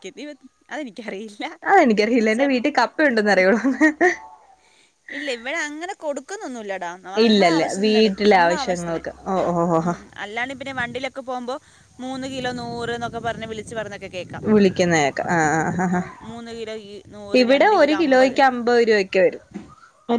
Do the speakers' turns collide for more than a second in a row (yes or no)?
yes